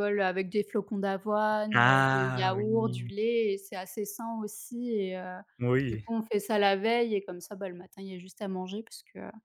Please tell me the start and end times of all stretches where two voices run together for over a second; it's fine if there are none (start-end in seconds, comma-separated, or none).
1.7-3.1